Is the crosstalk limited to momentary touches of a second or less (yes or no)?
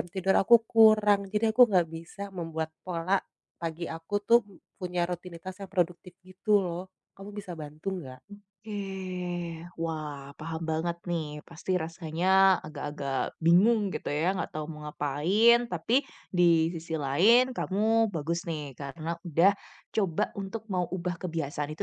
yes